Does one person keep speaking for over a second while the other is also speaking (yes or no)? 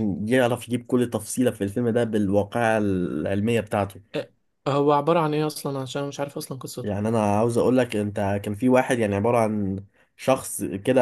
no